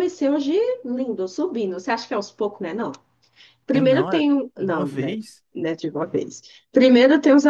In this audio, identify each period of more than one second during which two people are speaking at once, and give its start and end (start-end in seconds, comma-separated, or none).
3.7-5.2